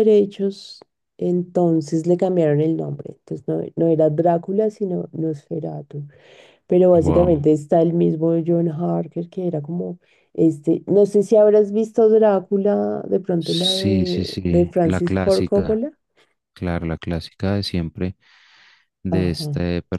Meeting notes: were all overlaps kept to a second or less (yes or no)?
no